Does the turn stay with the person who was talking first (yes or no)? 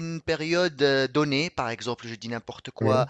yes